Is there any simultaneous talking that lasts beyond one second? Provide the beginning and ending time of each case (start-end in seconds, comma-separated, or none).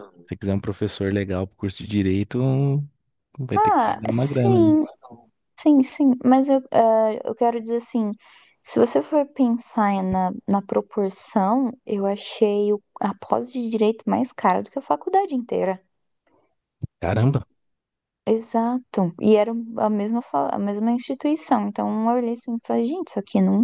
3.5-4.8